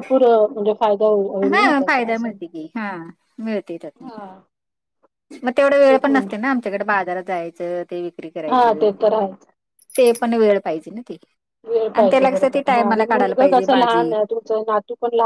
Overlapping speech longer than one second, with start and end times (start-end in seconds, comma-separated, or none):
11.9-14.1